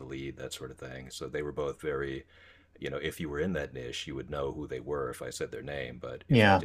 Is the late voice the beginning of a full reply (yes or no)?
no